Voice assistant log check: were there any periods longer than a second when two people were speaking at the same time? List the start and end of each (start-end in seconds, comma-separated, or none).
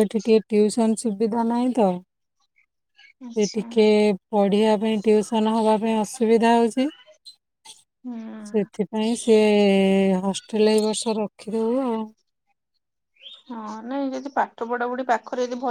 none